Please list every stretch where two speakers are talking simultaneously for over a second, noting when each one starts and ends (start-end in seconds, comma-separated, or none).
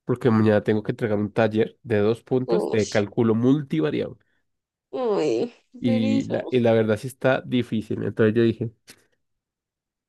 none